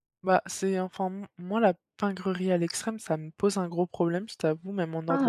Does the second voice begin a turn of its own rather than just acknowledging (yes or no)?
yes